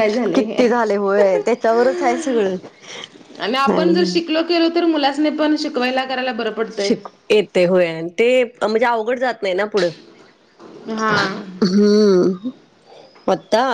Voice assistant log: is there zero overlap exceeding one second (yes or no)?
yes